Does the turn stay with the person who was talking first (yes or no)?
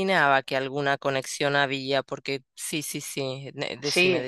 no